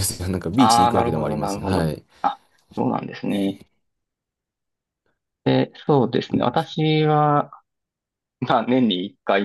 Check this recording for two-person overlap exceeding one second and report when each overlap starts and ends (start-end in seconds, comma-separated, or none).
0.6-1.9